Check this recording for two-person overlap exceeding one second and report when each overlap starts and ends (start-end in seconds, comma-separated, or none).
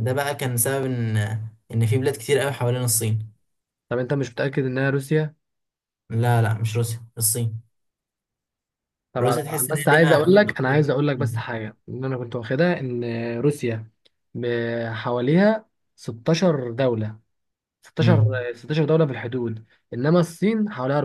9.2-11.4